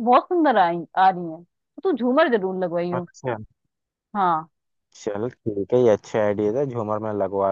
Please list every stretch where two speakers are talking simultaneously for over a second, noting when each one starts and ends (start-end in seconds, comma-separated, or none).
none